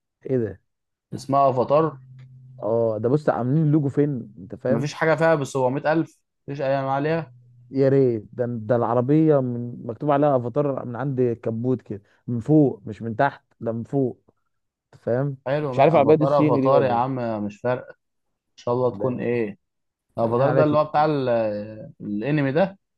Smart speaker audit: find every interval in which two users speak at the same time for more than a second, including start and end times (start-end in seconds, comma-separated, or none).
15.5-17.0